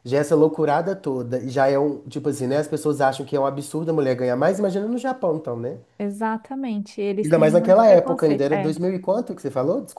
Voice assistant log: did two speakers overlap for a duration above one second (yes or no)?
yes